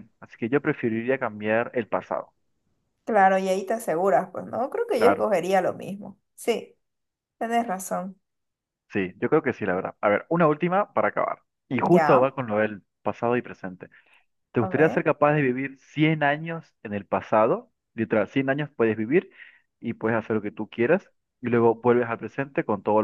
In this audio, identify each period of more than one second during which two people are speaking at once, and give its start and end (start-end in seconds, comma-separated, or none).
none